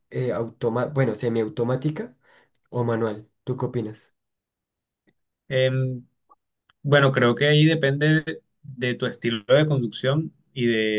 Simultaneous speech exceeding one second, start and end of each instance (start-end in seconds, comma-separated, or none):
none